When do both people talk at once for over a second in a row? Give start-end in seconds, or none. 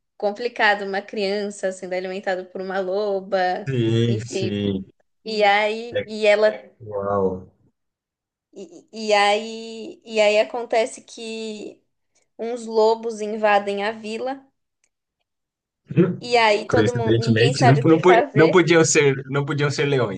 16.7-18.7